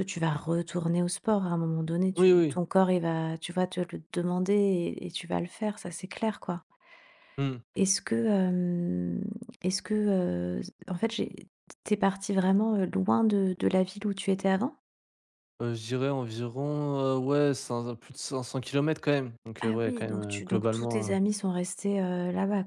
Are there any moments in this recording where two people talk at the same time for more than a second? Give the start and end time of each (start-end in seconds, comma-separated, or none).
19.6-21.1